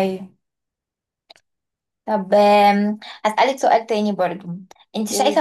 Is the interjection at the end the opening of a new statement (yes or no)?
no